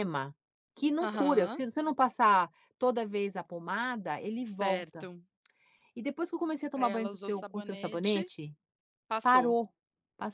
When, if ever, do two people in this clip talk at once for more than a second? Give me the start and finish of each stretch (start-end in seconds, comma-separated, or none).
6.7-8.2